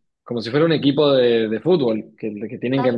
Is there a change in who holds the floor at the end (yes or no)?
no